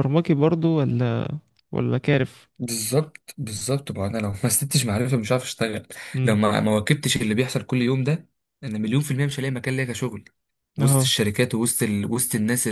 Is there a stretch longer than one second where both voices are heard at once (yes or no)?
no